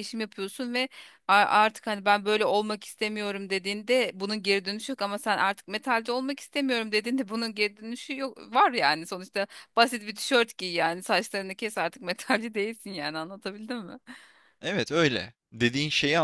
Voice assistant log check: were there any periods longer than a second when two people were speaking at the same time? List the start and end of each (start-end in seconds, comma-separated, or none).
none